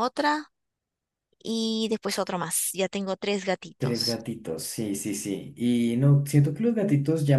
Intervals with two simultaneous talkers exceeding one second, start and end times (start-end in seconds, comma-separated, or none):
none